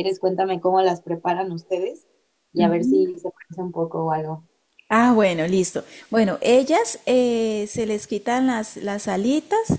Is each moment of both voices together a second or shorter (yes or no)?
yes